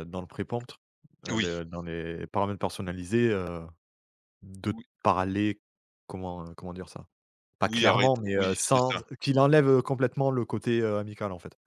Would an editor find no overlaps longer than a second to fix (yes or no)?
no